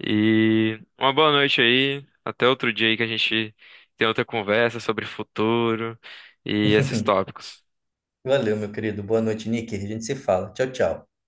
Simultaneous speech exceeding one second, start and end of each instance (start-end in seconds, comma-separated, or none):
none